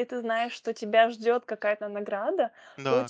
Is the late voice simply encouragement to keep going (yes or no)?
yes